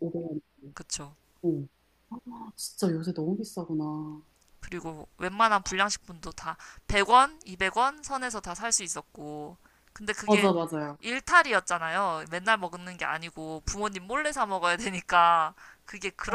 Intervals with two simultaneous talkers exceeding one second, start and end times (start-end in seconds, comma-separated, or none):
none